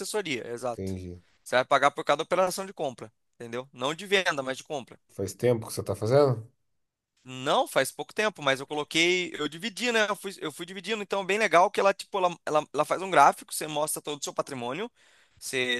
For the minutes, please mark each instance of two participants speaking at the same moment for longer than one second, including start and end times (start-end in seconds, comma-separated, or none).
none